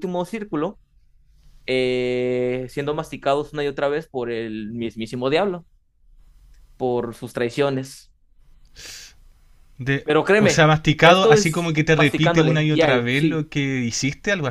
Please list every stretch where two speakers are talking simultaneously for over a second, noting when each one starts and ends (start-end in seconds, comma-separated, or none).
10.0-13.4